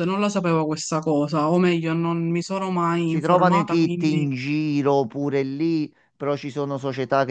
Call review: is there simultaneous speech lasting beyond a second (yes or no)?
yes